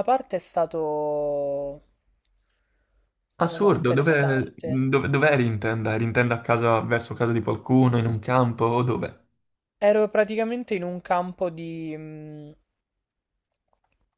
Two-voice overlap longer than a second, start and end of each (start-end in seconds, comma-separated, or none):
3.4-4.9